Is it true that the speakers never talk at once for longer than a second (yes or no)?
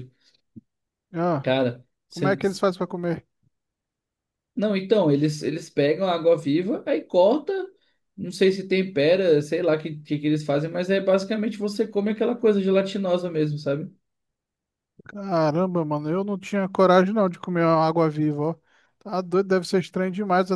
yes